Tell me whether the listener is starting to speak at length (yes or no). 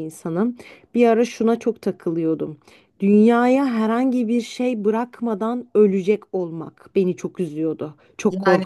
yes